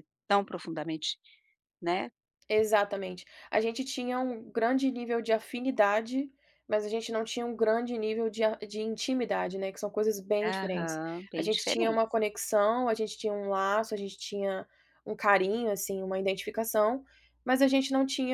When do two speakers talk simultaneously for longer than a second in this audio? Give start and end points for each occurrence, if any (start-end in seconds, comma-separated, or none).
10.4-12.0